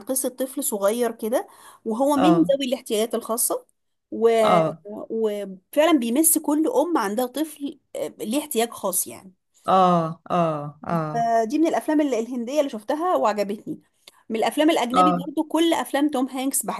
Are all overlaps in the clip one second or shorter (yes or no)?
yes